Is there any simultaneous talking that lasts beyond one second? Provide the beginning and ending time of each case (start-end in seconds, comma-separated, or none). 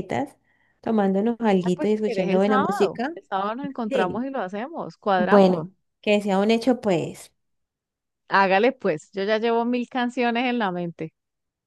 1.6-3.1